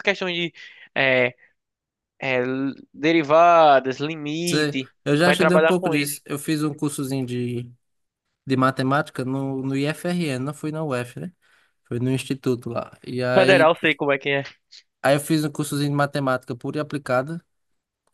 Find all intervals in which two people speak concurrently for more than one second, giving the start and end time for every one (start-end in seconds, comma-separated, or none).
4.5-6.2